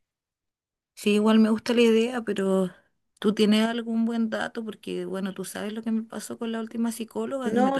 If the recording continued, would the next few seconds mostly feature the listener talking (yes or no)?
yes